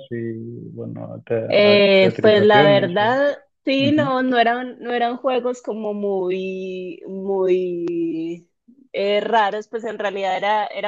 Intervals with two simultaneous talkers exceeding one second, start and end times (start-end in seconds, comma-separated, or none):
1.5-3.1